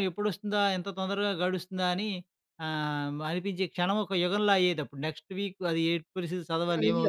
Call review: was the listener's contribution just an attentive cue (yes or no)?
no